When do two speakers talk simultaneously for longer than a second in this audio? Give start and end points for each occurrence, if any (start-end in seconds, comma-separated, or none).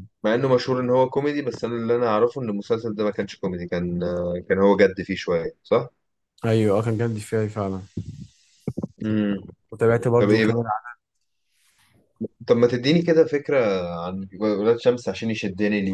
none